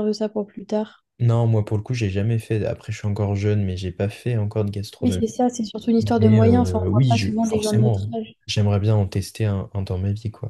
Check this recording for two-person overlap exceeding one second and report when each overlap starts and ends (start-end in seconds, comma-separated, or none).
6.0-8.3